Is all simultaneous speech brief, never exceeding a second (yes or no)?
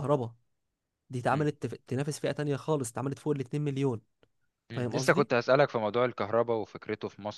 yes